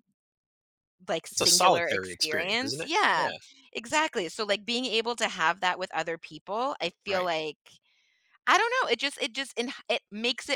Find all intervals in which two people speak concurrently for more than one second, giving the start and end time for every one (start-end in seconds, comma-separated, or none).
1.3-3.3